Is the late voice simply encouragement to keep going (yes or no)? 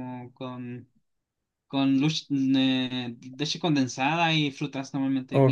no